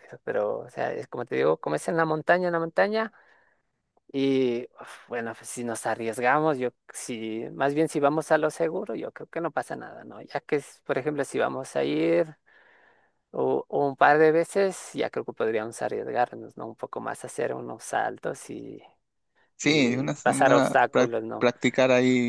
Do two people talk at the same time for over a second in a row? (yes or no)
yes